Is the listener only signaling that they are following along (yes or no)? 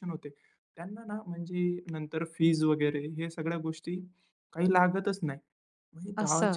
yes